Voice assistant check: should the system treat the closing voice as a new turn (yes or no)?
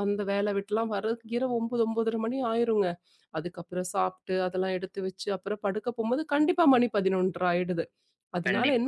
no